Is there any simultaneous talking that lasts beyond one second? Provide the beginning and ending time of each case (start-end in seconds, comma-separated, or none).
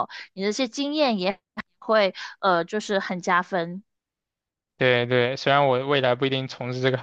none